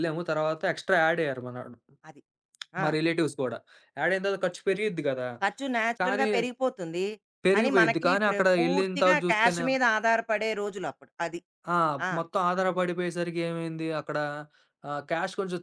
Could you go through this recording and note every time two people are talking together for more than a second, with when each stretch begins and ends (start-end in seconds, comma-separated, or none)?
7.5-9.6